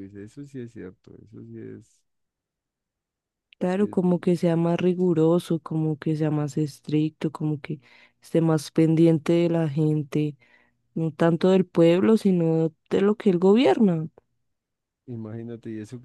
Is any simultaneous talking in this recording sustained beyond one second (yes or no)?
no